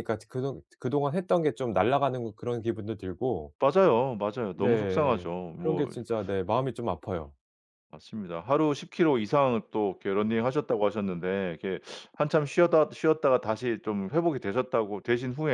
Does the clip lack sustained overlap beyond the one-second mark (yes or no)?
no